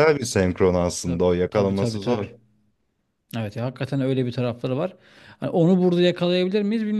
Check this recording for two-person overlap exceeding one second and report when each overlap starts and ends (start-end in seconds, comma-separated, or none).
1.0-2.3